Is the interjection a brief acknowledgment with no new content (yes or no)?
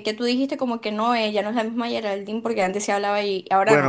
no